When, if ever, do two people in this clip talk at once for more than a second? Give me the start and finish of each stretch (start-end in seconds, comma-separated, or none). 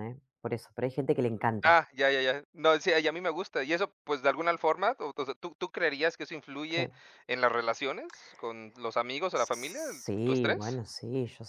9.3-10.8